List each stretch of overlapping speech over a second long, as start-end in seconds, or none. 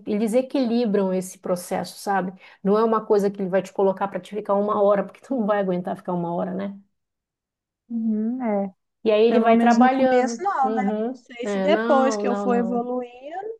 9.3-12.9